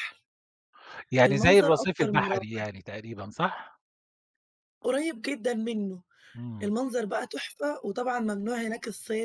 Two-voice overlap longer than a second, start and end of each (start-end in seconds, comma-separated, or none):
1.2-2.6